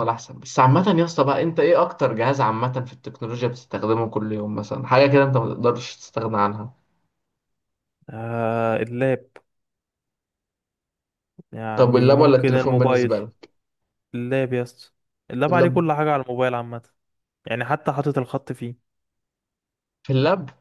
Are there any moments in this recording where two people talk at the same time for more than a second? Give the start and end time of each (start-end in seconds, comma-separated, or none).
11.8-13.2